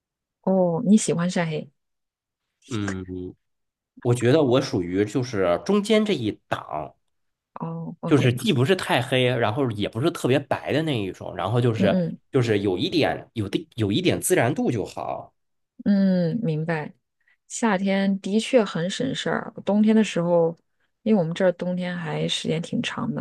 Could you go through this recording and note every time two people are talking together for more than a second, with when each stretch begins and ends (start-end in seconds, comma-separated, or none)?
none